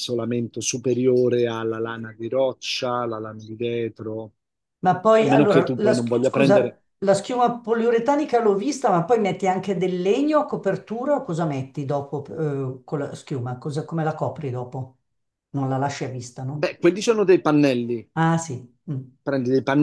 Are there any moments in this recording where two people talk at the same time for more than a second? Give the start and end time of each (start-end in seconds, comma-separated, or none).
5.2-6.8